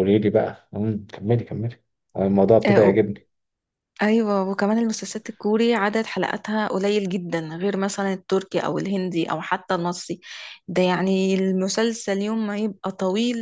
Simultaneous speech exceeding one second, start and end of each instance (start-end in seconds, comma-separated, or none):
none